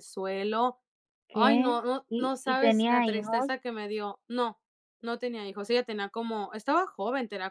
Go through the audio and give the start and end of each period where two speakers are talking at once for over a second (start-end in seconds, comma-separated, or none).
1.3-3.6